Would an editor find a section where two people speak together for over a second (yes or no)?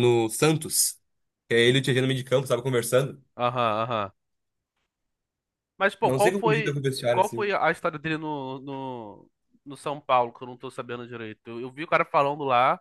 yes